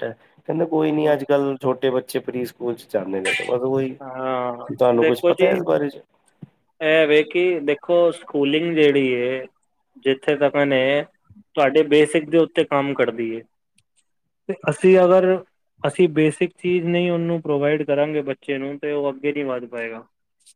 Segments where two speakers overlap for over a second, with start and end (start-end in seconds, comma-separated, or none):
none